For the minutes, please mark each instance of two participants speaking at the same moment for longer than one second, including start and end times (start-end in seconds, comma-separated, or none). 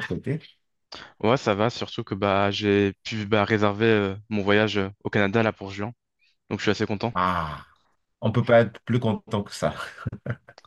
none